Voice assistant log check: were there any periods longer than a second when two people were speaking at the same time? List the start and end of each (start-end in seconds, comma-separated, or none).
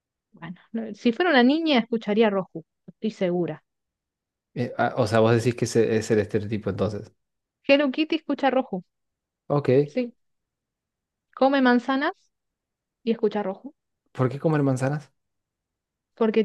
none